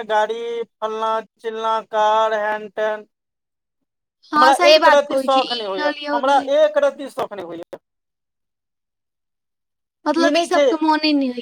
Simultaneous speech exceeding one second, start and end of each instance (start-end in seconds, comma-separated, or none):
4.4-6.4